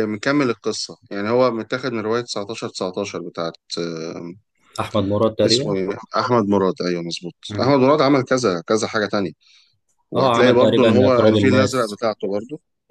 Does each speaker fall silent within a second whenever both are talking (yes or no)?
no